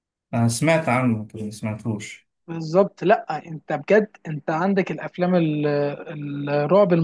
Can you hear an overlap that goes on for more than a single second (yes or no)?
no